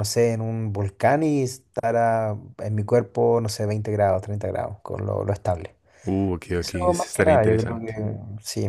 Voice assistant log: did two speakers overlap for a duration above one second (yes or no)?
yes